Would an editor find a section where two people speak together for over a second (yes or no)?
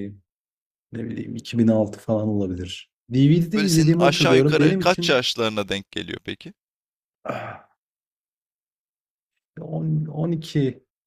yes